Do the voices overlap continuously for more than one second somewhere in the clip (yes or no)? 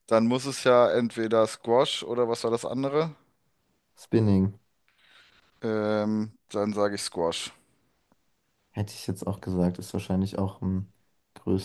no